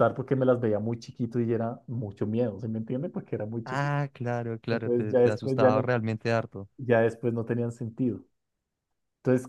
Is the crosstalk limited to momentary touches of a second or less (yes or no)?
no